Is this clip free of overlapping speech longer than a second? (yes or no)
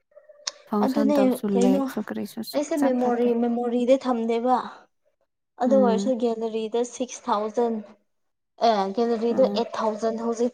no